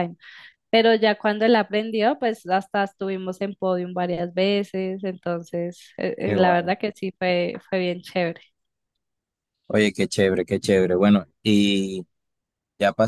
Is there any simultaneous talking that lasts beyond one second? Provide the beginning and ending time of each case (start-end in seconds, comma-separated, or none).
none